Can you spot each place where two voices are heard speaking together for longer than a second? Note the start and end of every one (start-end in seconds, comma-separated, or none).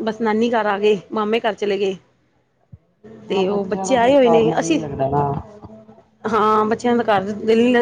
3.3-4.8